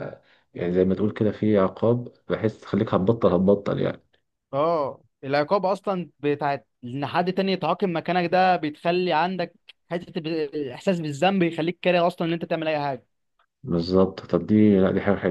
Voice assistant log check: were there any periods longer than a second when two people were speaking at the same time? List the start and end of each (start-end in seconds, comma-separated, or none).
none